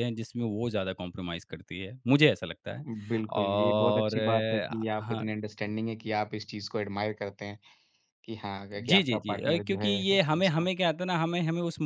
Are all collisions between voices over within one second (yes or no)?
no